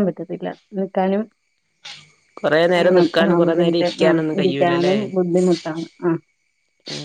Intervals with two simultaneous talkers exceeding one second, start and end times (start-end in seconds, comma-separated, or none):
2.8-5.0